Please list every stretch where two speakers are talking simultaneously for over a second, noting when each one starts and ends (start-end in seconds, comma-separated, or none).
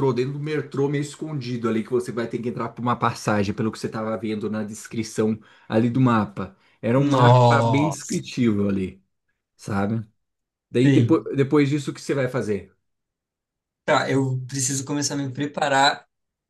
7.0-8.3